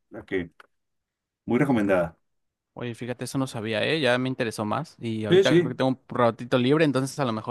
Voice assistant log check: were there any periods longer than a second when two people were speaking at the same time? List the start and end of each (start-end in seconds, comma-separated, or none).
none